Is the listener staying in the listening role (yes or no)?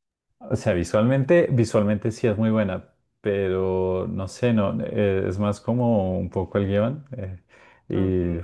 yes